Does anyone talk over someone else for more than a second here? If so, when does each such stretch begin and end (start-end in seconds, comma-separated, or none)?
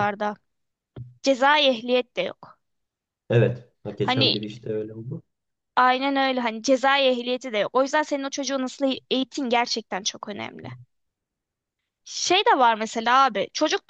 none